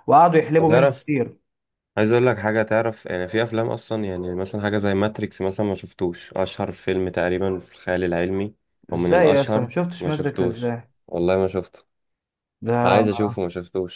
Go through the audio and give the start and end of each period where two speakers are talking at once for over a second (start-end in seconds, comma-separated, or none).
8.9-10.7